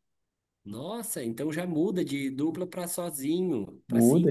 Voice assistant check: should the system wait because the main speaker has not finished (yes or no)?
yes